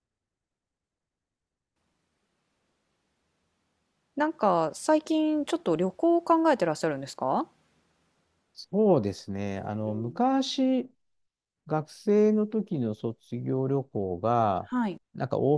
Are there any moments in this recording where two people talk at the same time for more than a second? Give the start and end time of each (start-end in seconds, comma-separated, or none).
none